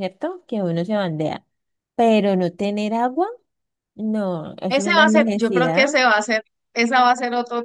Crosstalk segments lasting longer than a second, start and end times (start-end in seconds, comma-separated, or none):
4.7-6.0